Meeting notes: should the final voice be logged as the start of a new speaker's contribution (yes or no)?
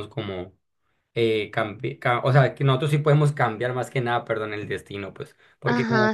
yes